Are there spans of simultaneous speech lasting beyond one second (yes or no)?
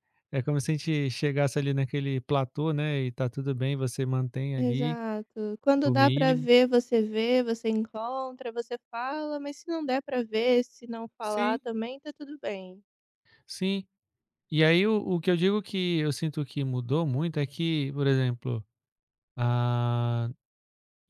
no